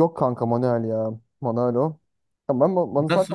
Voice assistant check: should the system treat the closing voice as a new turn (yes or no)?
no